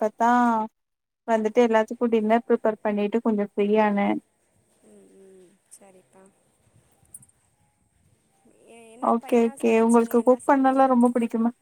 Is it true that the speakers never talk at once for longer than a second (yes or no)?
no